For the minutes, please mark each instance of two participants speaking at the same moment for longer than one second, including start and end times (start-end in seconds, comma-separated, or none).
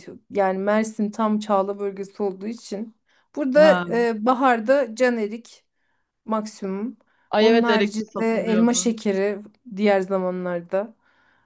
7.4-8.9